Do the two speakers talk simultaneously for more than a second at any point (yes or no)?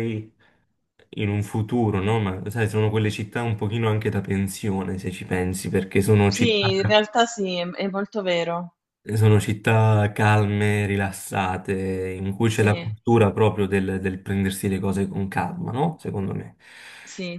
no